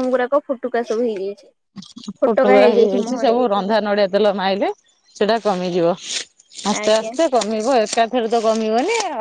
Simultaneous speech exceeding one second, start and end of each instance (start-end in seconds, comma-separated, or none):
none